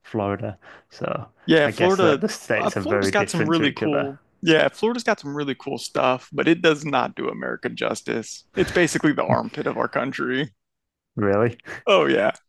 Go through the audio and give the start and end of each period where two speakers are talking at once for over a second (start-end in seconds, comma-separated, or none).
1.6-4.1